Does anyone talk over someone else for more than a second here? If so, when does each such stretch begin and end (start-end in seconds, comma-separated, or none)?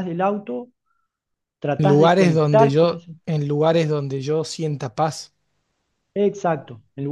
1.8-3.1